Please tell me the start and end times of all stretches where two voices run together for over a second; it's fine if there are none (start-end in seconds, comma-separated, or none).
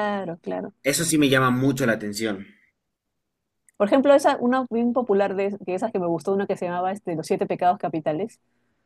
none